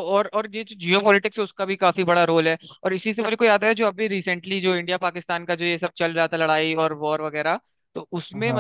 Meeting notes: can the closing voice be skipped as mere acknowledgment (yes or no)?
yes